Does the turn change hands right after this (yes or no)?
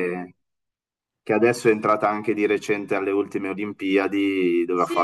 yes